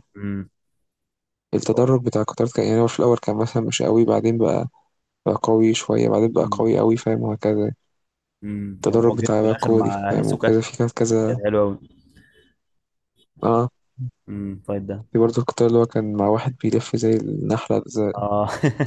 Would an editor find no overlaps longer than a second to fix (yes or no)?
no